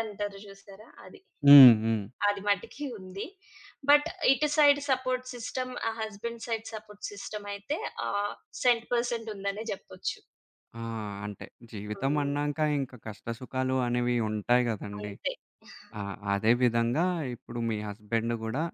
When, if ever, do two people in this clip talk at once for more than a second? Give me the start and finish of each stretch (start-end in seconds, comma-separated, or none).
none